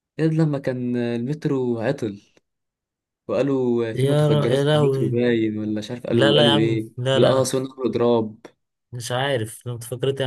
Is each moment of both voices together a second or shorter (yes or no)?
no